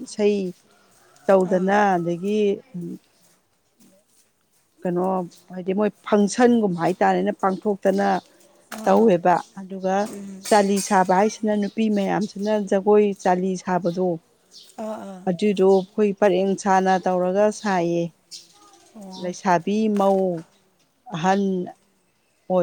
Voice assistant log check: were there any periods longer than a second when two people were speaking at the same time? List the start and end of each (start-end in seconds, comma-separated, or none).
none